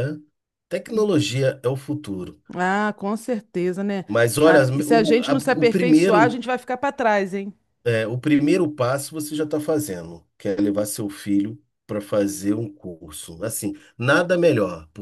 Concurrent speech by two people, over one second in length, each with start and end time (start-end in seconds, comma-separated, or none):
4.4-6.3